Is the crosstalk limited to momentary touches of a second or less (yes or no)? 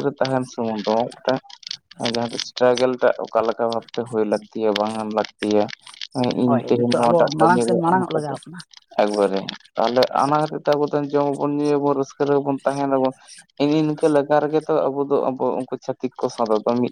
no